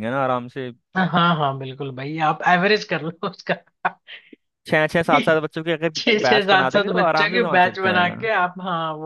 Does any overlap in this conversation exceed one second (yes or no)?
yes